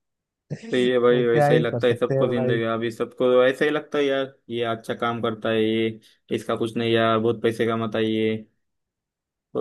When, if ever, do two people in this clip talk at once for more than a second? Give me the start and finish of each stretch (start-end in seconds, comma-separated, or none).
0.7-2.6